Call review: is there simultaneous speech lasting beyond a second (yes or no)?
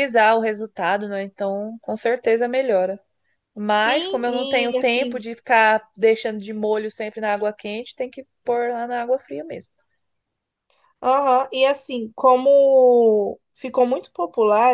yes